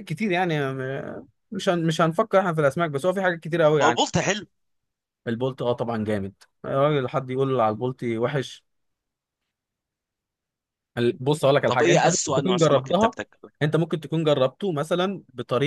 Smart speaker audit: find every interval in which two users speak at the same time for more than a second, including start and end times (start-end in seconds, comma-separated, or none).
11.7-13.2